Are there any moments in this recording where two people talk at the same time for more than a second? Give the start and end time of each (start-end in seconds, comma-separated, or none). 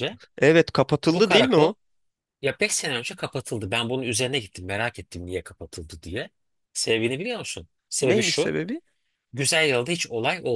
none